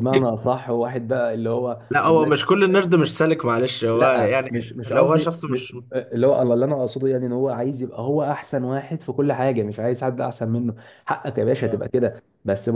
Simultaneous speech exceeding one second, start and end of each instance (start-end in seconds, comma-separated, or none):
3.9-5.5